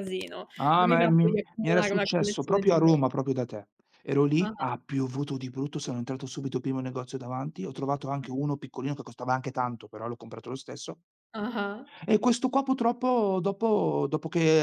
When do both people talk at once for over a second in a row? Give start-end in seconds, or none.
0.6-3.1